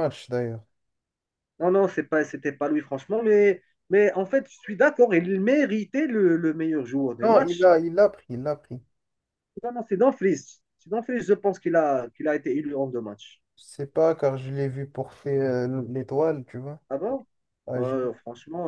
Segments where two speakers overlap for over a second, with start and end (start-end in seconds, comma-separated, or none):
none